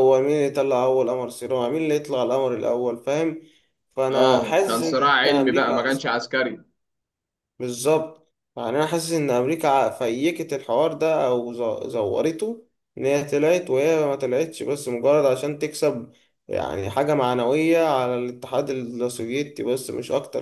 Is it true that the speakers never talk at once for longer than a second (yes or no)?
no